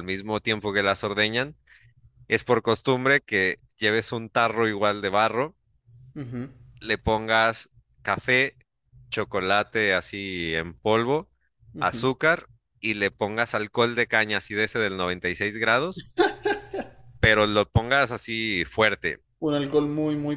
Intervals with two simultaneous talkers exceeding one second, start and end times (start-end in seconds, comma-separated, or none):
none